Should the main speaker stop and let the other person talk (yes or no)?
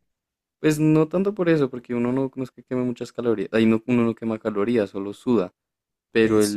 no